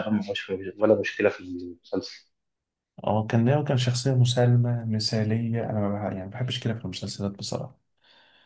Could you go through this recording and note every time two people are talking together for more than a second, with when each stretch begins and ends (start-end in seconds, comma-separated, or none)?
none